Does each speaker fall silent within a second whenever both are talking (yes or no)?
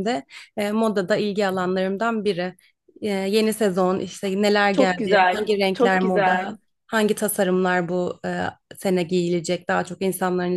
no